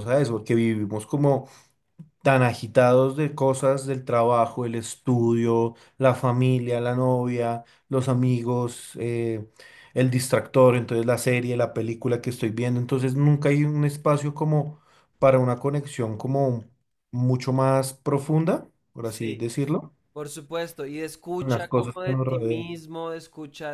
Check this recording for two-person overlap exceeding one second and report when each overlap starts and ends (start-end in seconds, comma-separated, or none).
21.4-22.7